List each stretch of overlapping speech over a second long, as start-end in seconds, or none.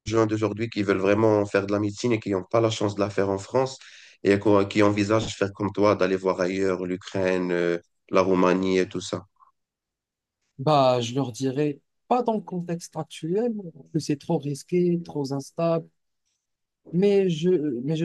none